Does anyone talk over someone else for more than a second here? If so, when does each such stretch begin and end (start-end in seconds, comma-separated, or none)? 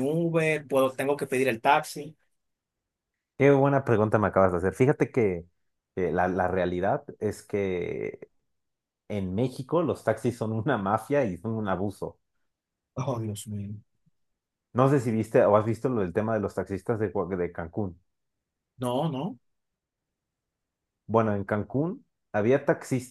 none